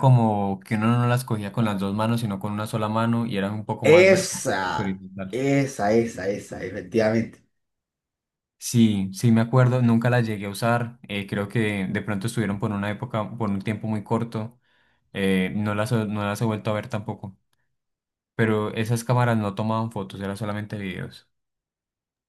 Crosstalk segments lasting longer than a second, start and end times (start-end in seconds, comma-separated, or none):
3.8-5.4